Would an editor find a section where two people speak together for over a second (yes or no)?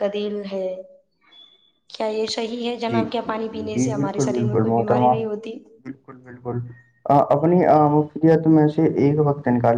yes